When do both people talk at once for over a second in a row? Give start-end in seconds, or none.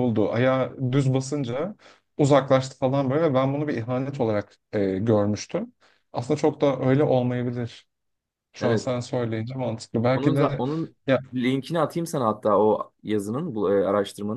none